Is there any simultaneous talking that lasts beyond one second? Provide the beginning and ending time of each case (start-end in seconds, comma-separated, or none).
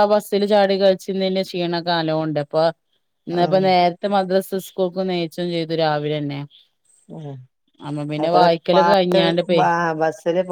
none